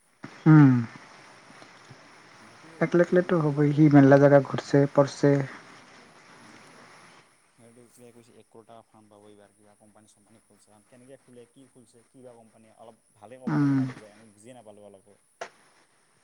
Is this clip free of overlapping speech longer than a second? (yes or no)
no